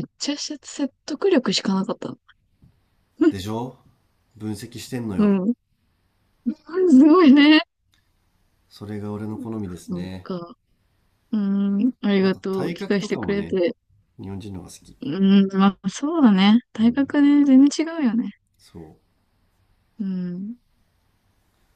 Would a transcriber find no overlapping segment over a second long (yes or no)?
no